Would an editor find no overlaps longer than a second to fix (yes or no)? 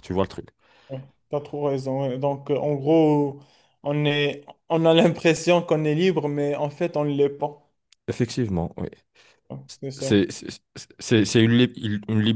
yes